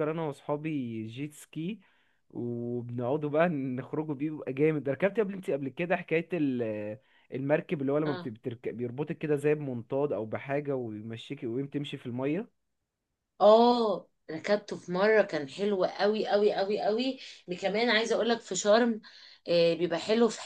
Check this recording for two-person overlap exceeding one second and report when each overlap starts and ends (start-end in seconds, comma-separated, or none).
none